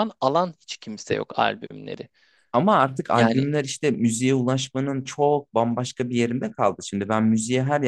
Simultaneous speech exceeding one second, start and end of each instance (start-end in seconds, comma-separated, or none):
none